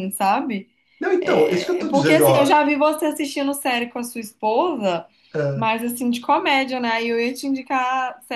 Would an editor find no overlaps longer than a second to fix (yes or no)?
no